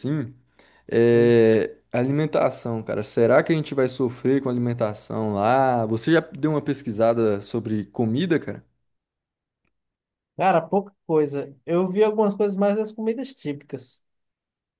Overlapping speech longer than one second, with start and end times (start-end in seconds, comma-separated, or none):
none